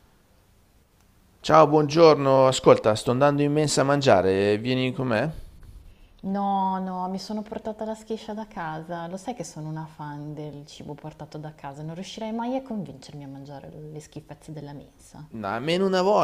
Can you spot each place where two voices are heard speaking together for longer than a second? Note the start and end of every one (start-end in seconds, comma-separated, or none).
none